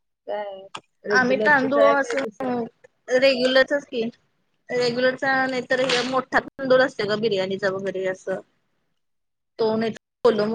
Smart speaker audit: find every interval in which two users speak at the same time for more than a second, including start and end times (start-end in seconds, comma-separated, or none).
1.2-2.6